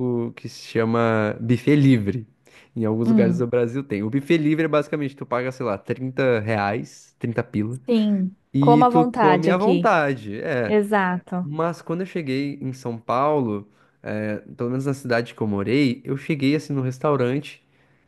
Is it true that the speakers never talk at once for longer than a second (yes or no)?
no